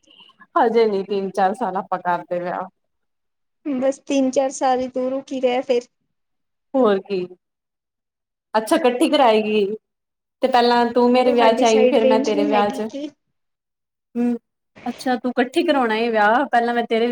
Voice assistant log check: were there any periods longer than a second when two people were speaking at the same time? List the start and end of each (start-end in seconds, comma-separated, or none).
11.2-12.9